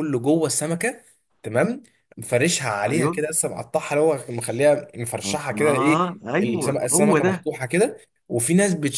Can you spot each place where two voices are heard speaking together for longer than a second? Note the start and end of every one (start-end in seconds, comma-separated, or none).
5.2-7.5